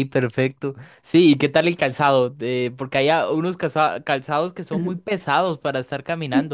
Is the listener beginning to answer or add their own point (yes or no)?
yes